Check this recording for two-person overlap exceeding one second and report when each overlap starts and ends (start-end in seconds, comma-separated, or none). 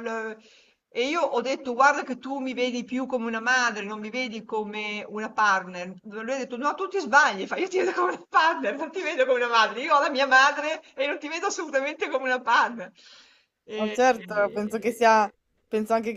13.8-15.0